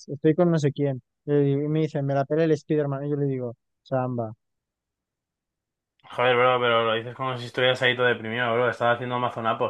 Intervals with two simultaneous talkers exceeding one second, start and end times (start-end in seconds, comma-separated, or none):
none